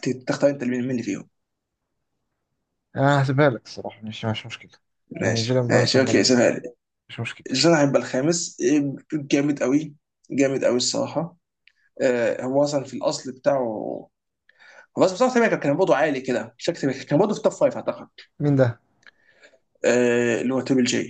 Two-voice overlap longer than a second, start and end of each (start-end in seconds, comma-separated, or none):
5.2-6.4